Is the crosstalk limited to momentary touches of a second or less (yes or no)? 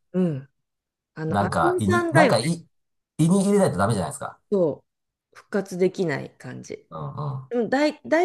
no